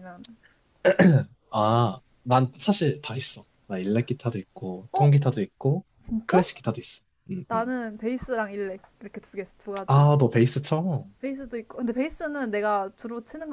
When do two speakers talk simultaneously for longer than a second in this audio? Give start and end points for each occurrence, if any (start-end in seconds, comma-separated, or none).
none